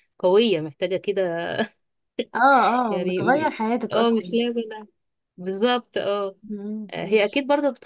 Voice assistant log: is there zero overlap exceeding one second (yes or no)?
yes